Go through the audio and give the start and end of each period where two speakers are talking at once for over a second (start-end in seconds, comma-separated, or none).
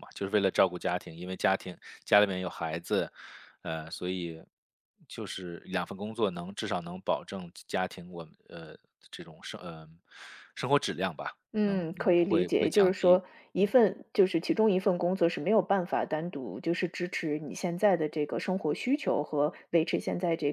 11.5-13.2